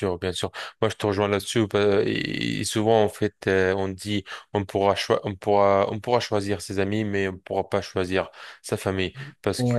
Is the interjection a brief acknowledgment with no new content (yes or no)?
yes